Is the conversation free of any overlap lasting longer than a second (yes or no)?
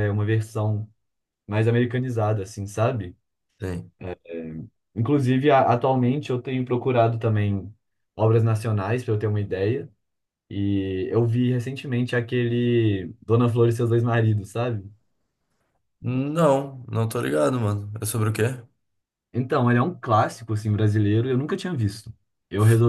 yes